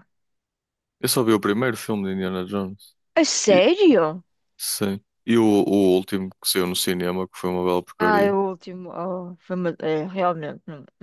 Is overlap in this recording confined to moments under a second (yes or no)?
yes